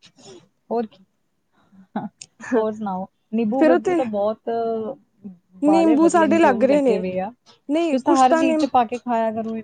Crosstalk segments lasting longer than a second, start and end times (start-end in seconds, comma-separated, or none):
5.7-7.0